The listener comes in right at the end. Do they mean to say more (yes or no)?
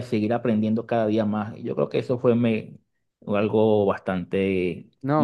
yes